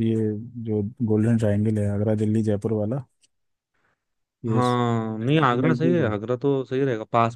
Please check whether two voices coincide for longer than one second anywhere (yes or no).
yes